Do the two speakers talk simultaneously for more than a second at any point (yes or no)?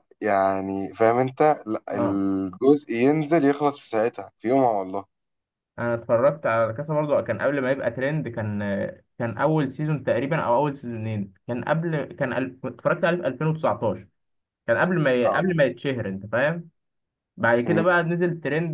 no